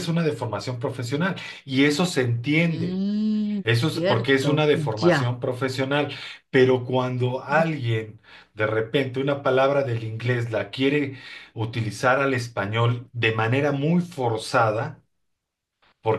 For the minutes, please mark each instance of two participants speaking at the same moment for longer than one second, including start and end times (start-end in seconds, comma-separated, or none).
3.6-5.3